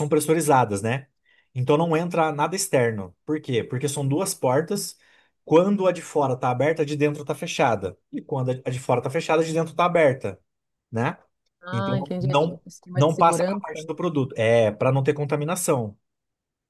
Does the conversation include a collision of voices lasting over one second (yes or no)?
yes